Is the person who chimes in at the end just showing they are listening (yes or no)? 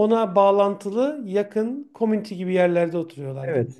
no